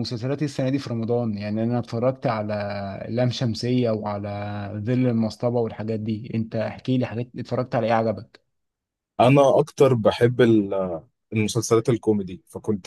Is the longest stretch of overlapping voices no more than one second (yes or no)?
yes